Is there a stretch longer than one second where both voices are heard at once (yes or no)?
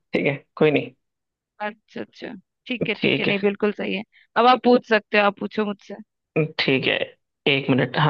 no